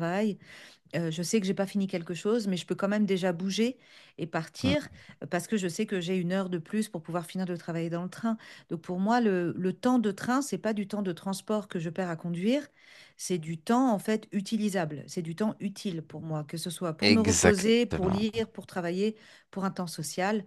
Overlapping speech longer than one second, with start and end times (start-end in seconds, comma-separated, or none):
17.0-18.3